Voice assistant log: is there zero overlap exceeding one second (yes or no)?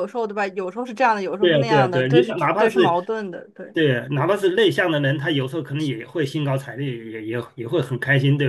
no